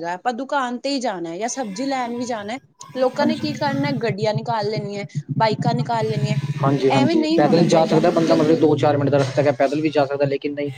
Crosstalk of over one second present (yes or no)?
yes